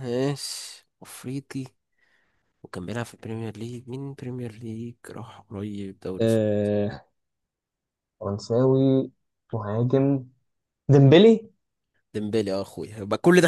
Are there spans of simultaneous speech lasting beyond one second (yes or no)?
no